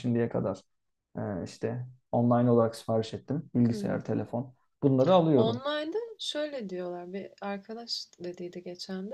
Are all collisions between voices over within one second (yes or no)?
yes